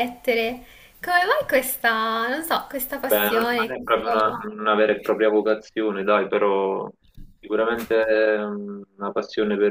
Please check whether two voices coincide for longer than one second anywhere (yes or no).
yes